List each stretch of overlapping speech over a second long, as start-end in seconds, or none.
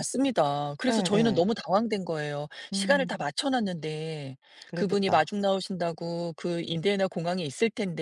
none